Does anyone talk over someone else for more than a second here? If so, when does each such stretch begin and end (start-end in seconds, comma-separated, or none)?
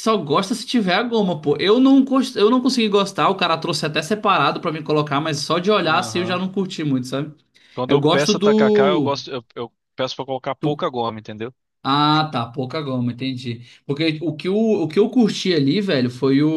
7.9-9.1